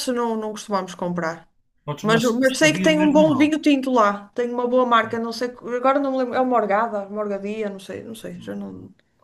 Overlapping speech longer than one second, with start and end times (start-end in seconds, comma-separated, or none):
2.0-3.5